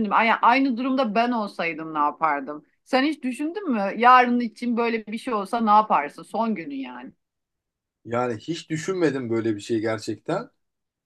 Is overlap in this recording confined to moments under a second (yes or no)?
yes